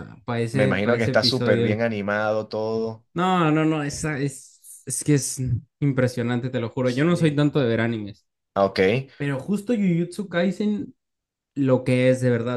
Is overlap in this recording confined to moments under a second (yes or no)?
no